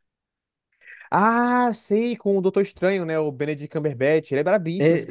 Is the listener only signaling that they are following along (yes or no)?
no